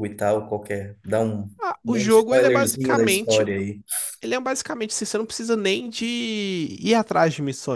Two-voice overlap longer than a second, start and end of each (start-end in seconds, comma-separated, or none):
1.8-3.5